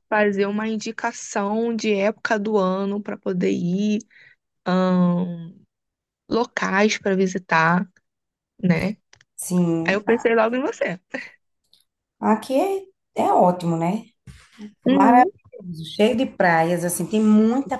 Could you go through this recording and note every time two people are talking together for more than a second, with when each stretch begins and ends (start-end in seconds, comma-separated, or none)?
none